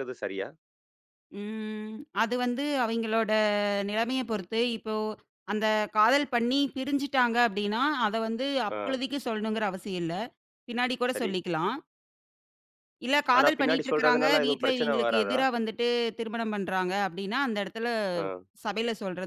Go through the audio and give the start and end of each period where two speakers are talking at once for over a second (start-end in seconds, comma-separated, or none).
13.4-15.4